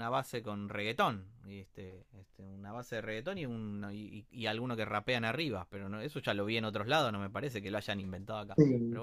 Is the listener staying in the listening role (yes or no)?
no